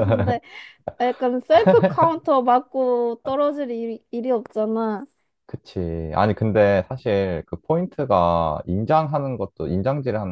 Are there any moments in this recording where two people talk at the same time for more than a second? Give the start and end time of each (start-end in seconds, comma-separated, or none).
none